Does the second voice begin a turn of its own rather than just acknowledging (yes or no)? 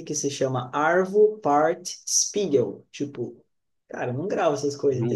no